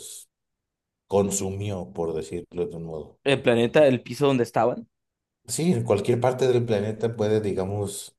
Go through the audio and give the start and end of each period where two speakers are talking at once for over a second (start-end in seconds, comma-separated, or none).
none